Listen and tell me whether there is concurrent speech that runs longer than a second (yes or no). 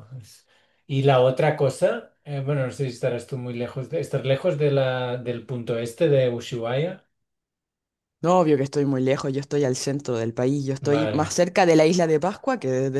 no